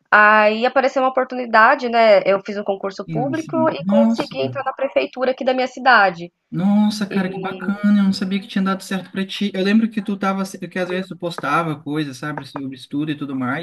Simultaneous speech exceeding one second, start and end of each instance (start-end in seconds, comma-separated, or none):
3.0-4.3